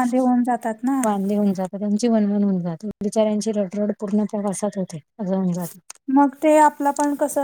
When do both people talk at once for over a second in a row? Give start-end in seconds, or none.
none